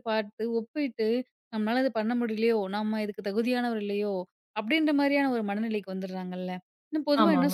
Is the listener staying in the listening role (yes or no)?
yes